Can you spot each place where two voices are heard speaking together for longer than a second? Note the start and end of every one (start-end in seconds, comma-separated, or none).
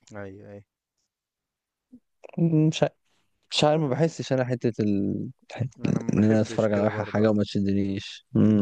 6.1-7.4